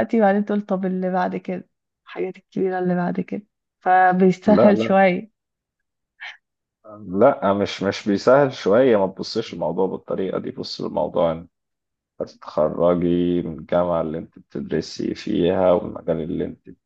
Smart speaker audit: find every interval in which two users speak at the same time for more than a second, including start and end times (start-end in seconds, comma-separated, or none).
none